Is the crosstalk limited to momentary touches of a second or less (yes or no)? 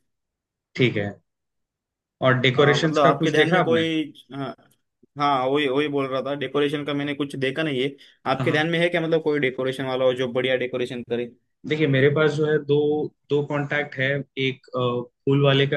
no